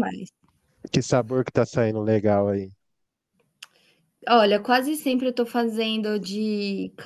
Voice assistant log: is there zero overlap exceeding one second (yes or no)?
yes